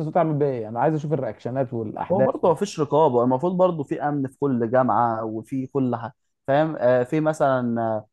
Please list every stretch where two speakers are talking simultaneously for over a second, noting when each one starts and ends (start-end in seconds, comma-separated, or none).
none